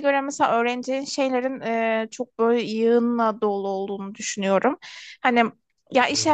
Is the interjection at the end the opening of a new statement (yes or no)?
no